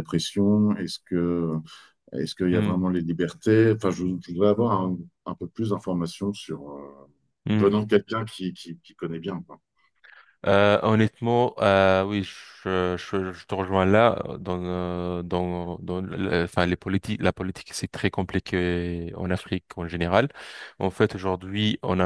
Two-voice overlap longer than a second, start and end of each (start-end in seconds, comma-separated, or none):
none